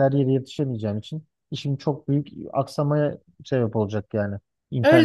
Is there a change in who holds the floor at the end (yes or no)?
yes